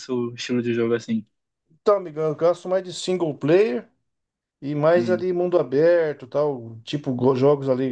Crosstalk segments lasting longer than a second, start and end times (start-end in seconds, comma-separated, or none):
none